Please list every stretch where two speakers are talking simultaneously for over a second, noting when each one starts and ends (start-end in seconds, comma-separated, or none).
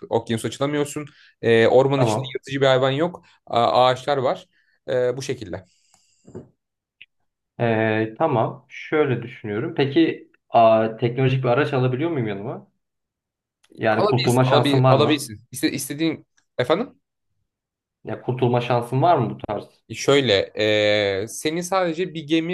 13.9-15.3